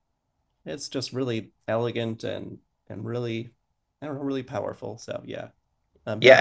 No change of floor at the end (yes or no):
no